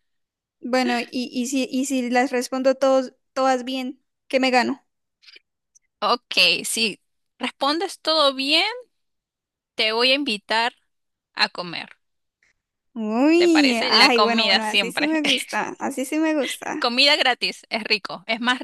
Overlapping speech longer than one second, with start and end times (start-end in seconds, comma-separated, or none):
13.4-15.1